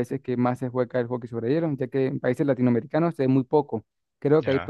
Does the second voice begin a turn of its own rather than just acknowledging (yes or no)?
no